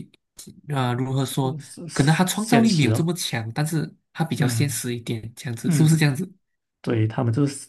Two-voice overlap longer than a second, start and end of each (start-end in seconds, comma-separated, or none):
1.9-3.1